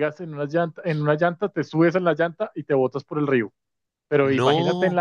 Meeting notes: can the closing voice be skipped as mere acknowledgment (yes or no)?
yes